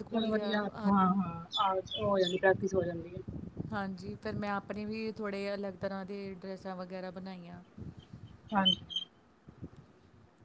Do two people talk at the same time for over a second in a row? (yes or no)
no